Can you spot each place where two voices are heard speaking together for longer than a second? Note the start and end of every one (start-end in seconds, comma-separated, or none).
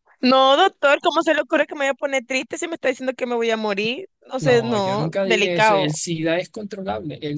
4.4-6.0